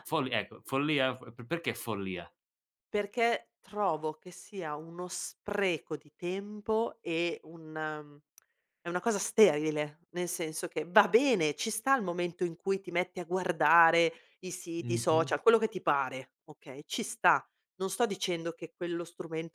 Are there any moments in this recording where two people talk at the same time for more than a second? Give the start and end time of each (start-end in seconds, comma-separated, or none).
none